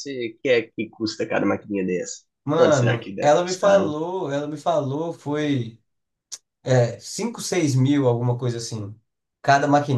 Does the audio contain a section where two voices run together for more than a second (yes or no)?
yes